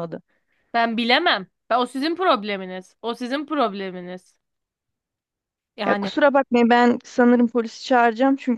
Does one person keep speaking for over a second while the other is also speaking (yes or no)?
no